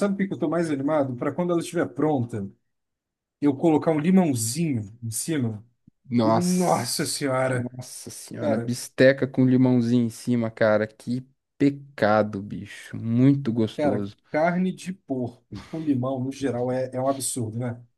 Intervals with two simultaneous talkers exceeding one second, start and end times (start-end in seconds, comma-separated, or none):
6.2-7.7